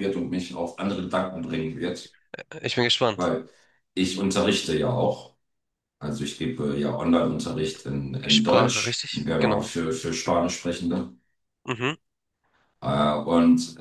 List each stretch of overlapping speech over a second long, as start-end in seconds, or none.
8.3-9.7